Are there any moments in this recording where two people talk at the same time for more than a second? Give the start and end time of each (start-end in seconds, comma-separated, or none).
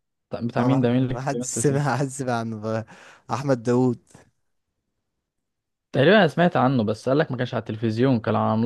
0.6-1.9